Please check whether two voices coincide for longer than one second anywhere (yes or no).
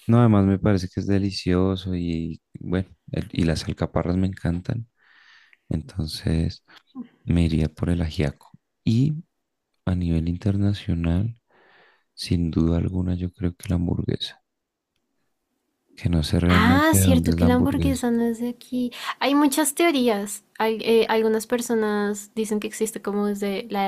yes